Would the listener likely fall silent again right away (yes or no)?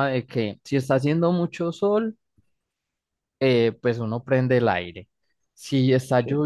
yes